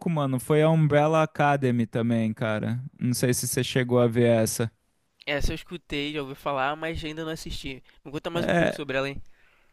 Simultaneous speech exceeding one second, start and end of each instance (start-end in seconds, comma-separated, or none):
none